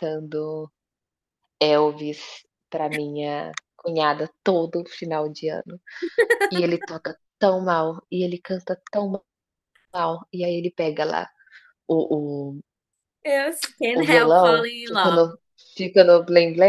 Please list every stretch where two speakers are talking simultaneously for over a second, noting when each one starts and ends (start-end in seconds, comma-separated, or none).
13.9-15.3